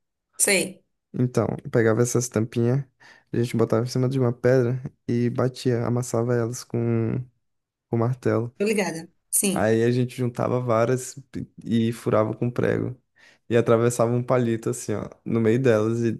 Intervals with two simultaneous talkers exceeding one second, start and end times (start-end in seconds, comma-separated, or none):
none